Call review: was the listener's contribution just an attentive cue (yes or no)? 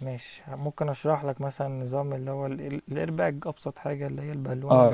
no